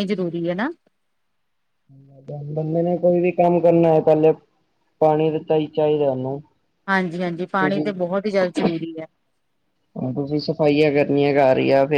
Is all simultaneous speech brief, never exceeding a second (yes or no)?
yes